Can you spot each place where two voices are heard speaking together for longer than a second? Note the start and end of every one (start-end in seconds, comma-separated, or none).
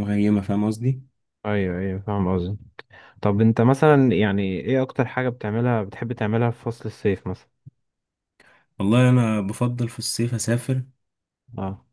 none